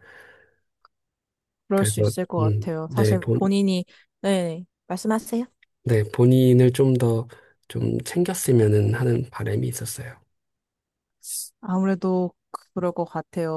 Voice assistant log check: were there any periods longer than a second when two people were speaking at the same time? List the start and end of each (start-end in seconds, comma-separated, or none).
1.8-3.4